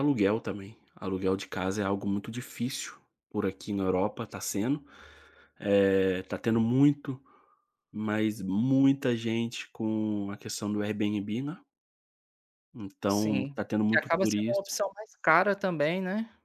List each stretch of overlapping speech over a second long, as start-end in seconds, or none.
13.1-14.7